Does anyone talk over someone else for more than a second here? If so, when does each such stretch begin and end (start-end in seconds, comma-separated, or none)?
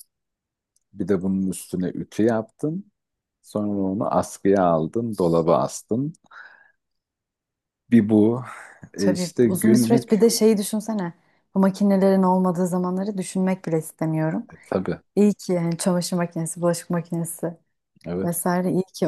8.9-10.2